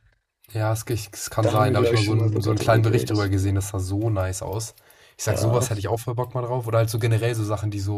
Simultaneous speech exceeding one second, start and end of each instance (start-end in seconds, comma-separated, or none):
1.4-3.3